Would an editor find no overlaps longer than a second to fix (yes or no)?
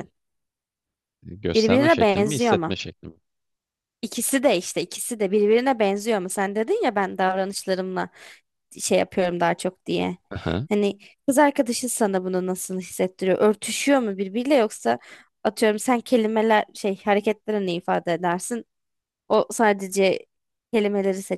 no